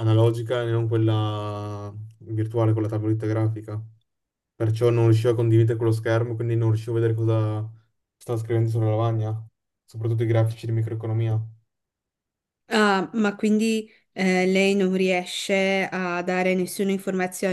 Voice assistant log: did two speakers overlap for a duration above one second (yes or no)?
no